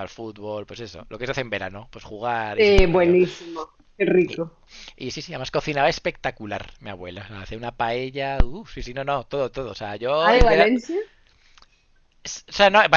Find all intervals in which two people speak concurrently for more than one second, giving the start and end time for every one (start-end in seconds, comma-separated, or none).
none